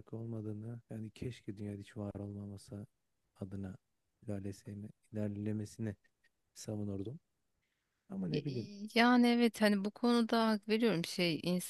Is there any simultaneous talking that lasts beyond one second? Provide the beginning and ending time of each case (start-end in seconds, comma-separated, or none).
none